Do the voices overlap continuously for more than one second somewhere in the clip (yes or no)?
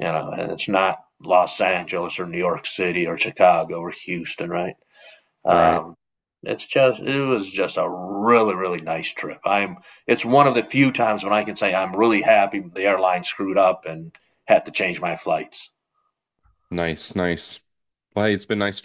no